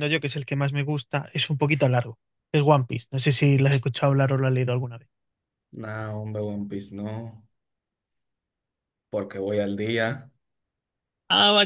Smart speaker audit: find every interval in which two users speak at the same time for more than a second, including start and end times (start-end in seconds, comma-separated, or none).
none